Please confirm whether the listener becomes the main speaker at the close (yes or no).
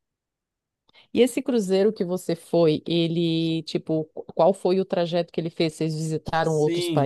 yes